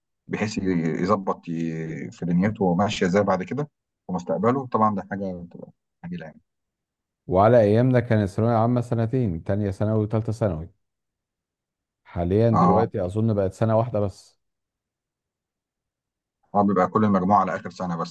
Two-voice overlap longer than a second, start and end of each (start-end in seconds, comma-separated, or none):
none